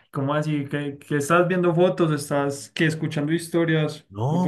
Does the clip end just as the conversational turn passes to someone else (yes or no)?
yes